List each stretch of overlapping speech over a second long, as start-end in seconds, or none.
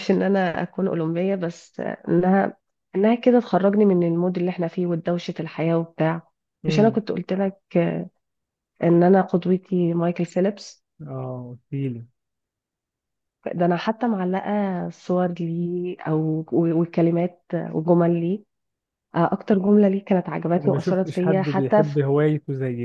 20.6-22.0